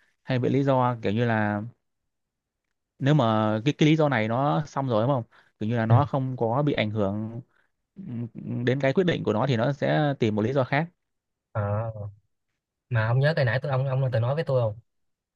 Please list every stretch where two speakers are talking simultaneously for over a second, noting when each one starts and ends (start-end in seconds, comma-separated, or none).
none